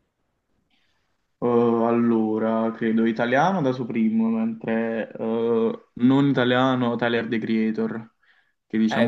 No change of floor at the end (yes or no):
no